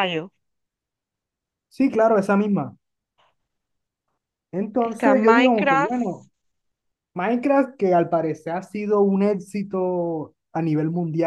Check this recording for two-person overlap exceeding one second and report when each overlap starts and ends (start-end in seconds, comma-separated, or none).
4.8-6.0